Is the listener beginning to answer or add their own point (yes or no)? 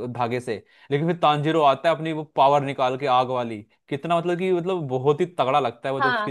yes